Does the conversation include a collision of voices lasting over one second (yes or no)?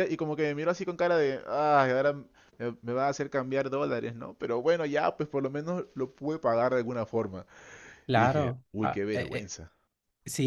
yes